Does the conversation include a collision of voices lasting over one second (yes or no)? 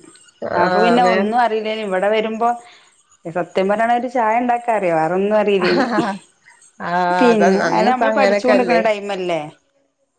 yes